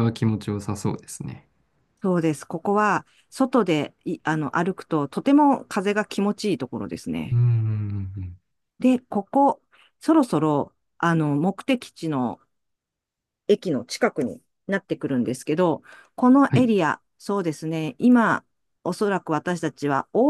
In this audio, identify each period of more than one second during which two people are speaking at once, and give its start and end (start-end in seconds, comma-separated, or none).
none